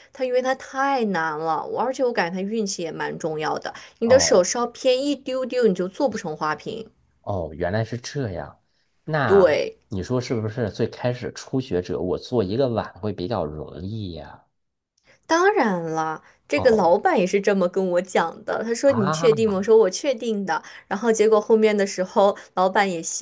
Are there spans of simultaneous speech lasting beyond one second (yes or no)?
no